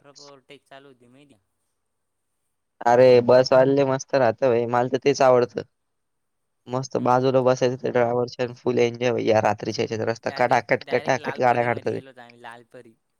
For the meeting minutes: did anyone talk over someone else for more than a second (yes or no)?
yes